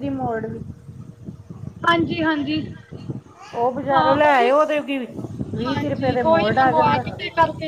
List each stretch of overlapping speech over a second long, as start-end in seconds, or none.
5.7-7.0